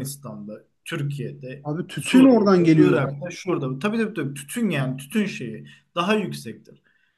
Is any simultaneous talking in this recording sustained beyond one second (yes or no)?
yes